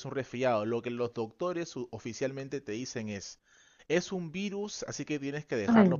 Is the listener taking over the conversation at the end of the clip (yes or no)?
no